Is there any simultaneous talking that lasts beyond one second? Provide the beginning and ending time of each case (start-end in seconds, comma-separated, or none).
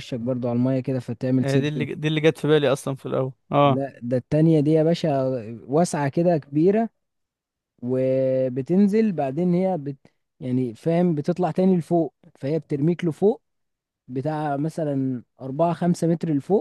none